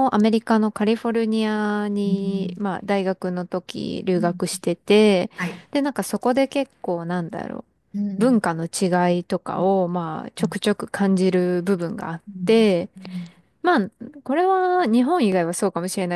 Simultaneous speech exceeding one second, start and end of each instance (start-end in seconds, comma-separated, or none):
none